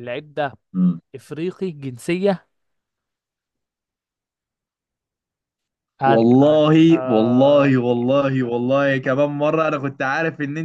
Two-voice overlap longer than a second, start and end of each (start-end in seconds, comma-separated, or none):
6.0-7.8